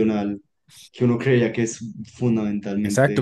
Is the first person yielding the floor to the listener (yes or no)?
yes